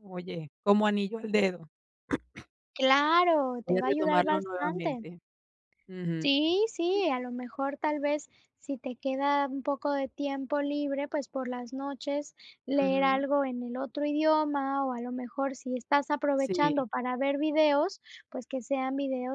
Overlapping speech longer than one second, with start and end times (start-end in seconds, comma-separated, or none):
3.6-5.0